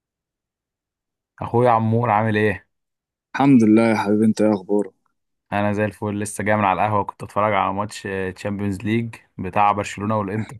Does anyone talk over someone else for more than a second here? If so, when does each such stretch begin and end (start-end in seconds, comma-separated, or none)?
none